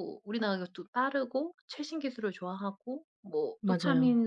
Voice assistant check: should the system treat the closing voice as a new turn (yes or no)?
no